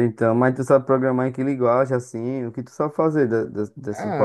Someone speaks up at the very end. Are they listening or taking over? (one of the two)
taking over